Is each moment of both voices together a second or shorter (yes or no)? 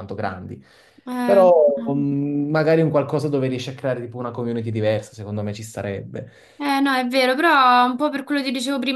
yes